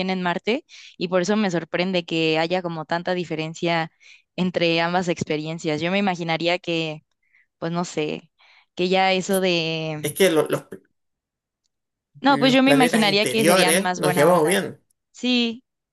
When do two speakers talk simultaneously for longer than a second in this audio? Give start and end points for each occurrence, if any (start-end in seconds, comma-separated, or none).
12.3-14.6